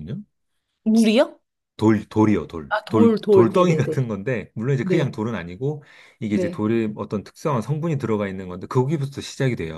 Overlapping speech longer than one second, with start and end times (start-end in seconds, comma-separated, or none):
2.7-4.0